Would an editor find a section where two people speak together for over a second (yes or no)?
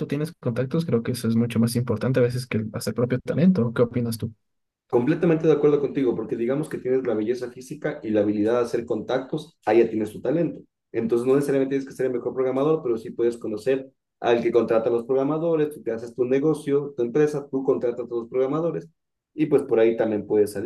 no